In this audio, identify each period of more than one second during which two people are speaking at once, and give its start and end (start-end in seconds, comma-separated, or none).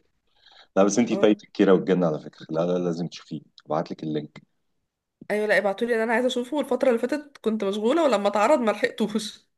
none